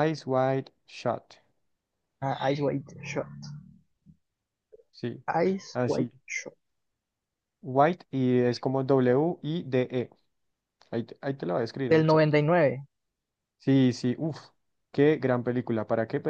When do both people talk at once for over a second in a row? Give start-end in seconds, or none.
none